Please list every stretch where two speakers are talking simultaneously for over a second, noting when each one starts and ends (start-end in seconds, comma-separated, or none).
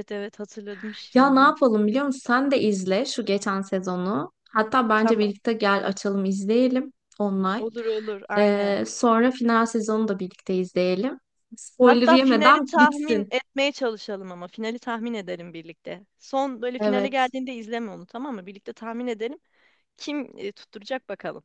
11.8-13.3